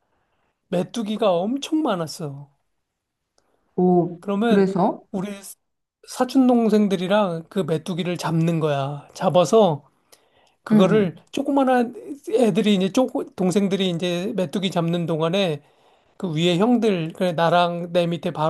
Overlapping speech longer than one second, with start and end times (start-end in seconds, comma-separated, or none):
none